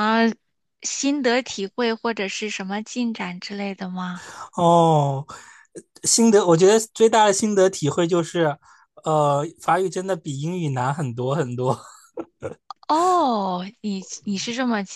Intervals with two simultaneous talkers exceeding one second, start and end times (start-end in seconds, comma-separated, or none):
none